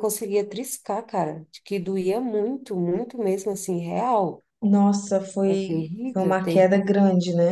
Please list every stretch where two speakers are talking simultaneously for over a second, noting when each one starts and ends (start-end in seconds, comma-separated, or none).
5.5-6.8